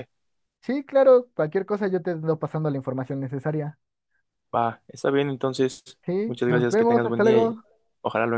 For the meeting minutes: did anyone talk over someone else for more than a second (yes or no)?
yes